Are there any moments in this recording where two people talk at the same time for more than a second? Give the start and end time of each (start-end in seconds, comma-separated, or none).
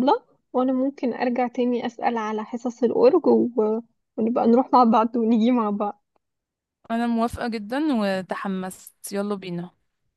none